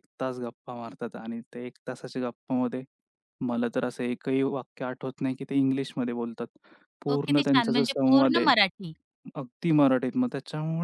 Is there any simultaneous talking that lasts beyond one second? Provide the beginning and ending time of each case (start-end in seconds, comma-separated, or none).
7.1-8.5